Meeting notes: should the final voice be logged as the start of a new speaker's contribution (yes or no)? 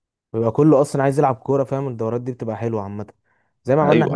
no